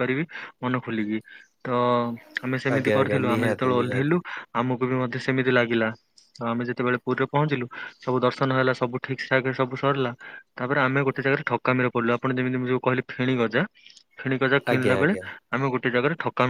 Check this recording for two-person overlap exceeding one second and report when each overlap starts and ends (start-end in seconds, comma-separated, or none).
2.8-4.2